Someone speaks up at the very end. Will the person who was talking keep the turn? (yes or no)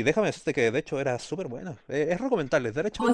no